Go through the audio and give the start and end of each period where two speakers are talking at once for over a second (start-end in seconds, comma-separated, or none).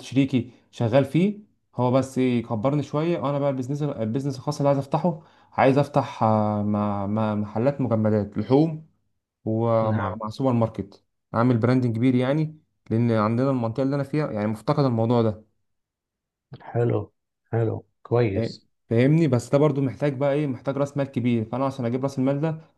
none